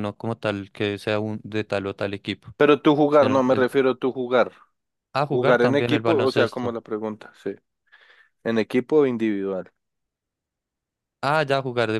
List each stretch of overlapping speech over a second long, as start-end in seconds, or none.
5.3-6.8